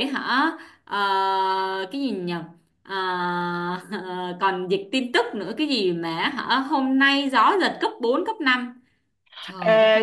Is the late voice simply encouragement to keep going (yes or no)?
no